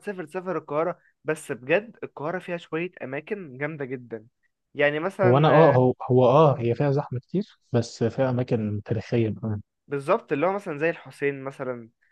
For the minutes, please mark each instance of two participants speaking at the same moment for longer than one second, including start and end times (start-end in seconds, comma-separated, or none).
none